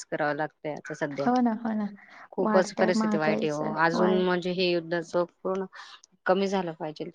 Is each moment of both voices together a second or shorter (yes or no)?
no